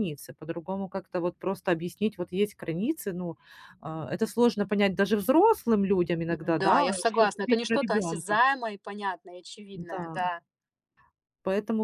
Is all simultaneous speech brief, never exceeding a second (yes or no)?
no